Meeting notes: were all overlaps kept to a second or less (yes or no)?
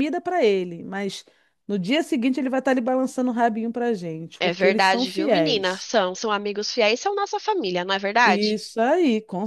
no